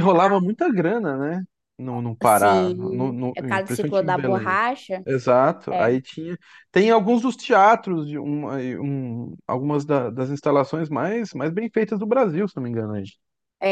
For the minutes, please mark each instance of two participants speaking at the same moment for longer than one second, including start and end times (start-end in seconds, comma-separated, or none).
2.2-4.6